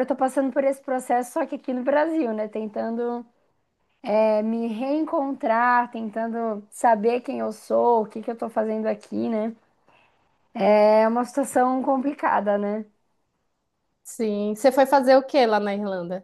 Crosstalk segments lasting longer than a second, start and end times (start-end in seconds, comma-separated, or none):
none